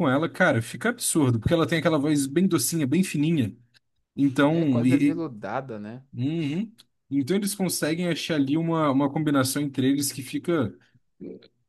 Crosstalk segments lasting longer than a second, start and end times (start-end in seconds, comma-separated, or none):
none